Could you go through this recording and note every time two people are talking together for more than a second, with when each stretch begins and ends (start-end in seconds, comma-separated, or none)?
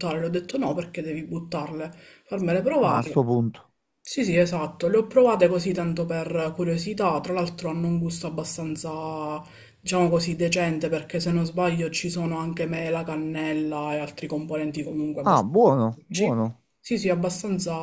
15.2-16.6